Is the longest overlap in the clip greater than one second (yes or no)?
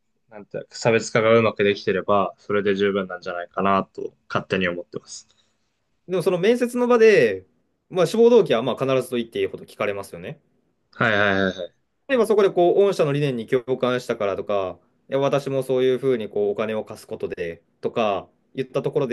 no